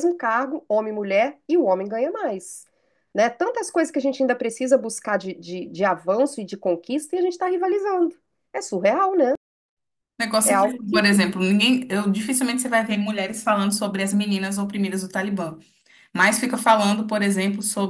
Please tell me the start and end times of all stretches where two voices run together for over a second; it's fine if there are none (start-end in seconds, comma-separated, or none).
none